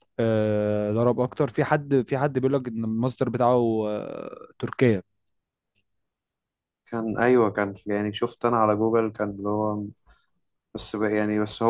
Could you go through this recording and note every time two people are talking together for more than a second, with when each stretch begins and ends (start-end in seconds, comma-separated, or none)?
none